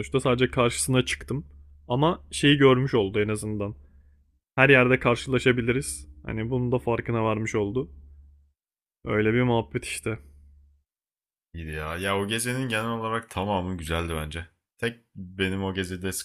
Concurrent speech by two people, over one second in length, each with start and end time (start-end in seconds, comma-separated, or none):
none